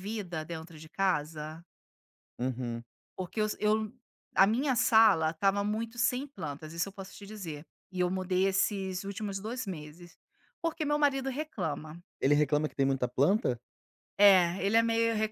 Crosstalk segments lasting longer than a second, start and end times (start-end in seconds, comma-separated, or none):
none